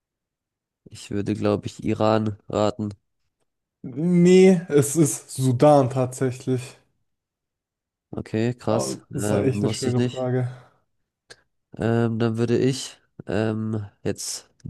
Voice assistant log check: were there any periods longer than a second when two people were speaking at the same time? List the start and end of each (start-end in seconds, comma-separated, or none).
8.7-10.3